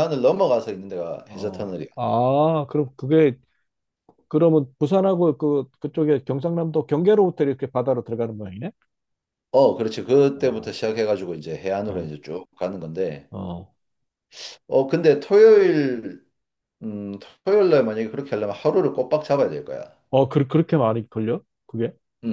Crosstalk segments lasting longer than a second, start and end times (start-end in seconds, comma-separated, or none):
none